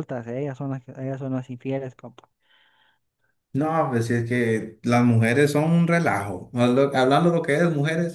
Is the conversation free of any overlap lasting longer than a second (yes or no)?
yes